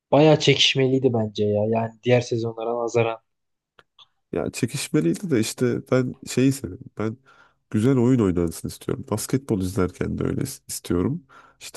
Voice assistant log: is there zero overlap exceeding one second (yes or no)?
yes